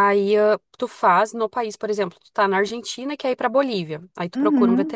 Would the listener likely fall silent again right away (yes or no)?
yes